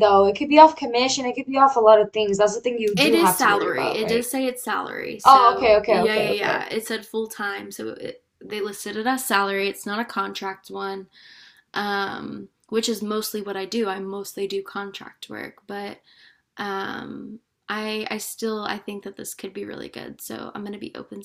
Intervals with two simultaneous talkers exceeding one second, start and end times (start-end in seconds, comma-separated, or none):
3.0-4.3, 5.2-6.7